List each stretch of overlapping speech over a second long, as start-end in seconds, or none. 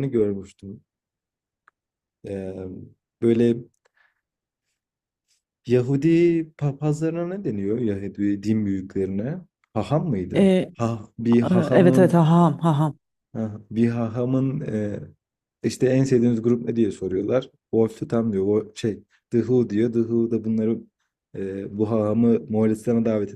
none